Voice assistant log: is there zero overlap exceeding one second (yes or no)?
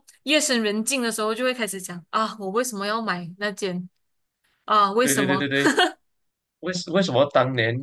yes